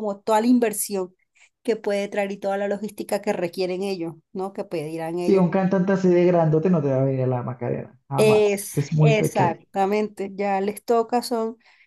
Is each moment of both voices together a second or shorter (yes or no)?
no